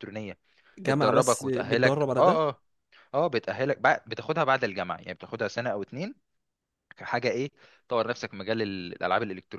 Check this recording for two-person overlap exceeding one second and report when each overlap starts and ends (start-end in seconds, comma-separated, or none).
0.9-2.5